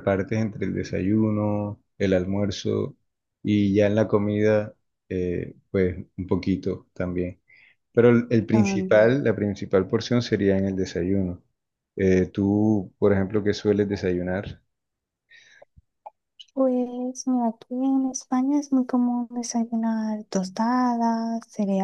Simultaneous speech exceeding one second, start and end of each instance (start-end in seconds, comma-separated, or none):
none